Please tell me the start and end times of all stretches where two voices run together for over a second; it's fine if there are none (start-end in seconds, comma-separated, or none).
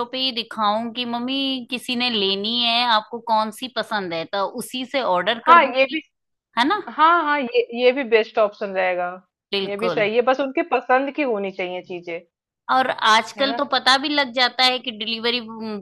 none